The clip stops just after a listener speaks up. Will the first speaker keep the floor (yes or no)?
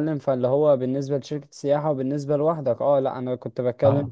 yes